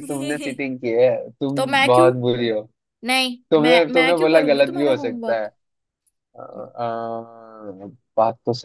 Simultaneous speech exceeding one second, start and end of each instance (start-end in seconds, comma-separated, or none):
3.5-5.5